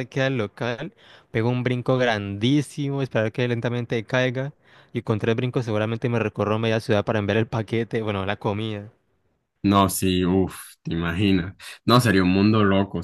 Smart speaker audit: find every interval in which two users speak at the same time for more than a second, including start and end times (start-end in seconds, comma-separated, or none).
none